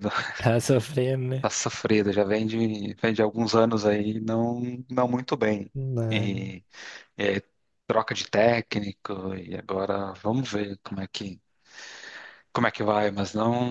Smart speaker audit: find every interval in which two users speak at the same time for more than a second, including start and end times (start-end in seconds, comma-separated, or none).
none